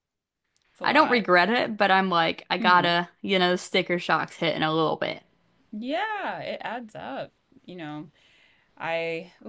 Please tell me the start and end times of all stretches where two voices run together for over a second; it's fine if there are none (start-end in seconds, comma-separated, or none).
none